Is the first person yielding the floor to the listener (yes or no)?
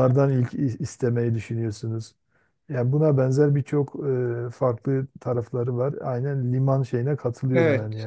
yes